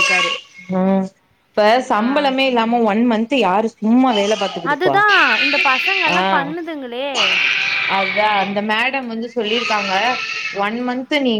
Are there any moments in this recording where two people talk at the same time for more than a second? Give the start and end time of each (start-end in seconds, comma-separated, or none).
none